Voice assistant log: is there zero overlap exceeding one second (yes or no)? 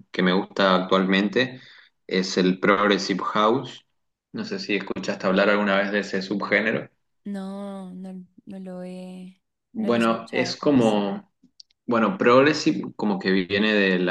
no